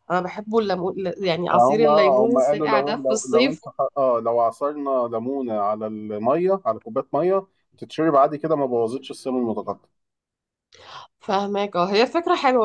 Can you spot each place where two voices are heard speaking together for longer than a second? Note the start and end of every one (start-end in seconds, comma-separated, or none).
1.5-3.7